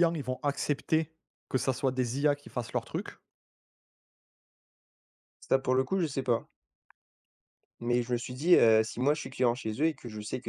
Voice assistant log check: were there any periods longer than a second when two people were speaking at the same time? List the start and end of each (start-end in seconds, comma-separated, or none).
none